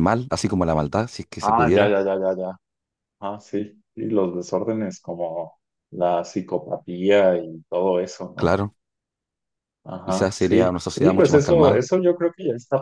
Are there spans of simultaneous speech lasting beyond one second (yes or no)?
yes